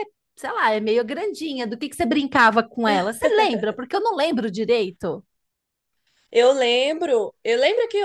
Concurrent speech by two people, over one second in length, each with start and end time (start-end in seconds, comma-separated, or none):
none